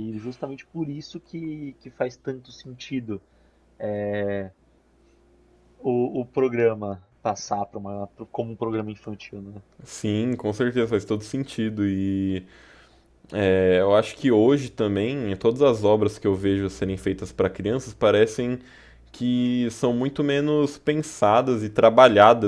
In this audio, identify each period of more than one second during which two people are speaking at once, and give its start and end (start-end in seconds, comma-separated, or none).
none